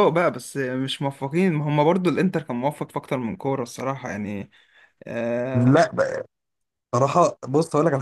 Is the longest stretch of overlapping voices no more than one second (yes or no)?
yes